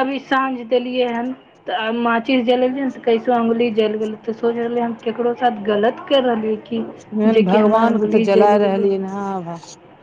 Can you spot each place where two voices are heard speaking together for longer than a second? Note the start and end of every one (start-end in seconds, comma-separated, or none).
7.4-8.9